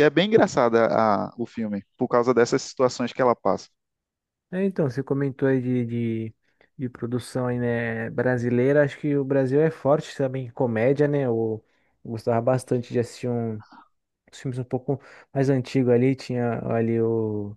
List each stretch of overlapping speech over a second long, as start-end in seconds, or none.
none